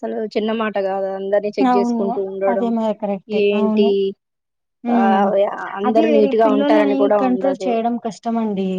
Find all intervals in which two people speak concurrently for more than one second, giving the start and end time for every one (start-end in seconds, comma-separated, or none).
5.9-7.7